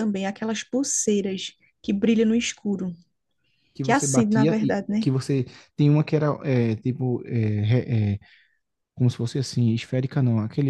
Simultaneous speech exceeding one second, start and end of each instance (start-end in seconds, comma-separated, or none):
3.8-5.1